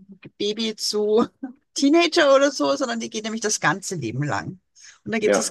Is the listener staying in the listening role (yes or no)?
yes